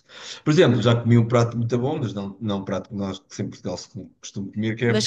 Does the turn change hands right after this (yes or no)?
yes